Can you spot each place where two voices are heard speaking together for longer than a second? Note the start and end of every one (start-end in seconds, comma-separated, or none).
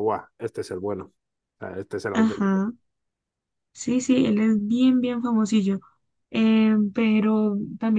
none